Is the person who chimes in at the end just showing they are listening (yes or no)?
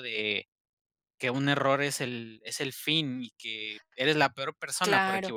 no